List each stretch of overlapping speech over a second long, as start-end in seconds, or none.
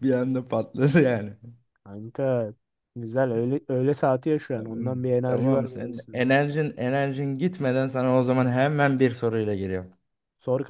4.5-6.2